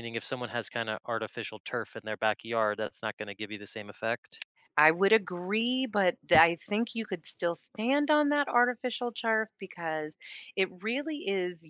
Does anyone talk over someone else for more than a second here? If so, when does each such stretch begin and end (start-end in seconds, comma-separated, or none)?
none